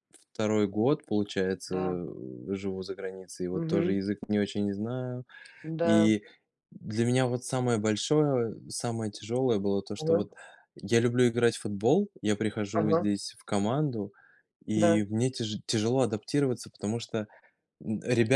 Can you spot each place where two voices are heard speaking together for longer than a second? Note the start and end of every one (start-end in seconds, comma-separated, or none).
none